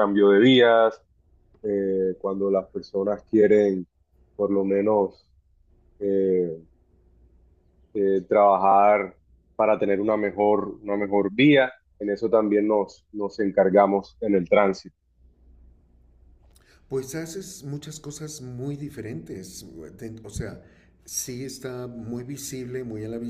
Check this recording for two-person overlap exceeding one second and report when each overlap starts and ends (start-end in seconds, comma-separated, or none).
none